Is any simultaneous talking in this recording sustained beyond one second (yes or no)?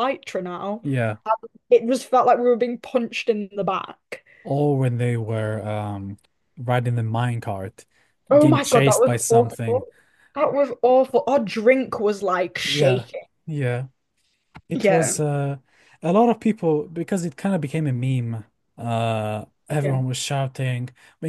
yes